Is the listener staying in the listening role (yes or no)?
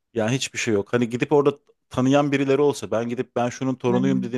yes